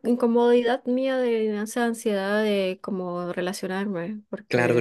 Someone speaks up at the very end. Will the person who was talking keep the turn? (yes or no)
no